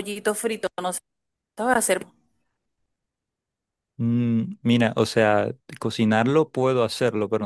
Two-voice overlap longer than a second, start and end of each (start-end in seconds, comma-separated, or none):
none